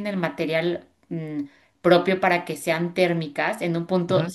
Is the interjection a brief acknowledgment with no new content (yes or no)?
yes